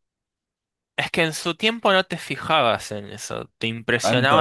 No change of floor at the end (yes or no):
no